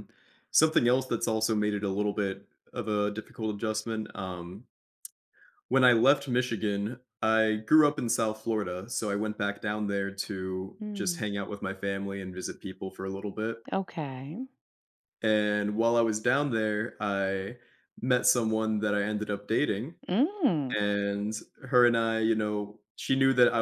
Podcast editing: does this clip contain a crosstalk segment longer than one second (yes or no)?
no